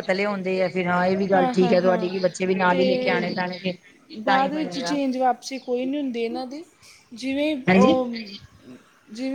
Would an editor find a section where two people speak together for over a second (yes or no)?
yes